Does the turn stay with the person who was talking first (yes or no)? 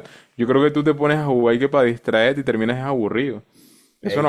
no